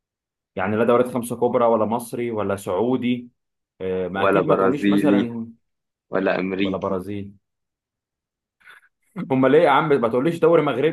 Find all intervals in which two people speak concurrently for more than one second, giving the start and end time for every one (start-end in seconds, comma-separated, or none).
4.1-5.3